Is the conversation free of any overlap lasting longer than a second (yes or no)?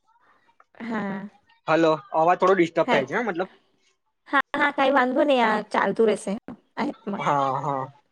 yes